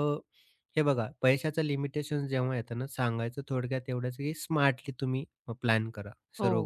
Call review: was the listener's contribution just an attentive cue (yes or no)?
no